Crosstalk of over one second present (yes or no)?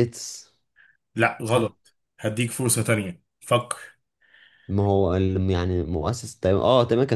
no